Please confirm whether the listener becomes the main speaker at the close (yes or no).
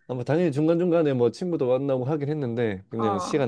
no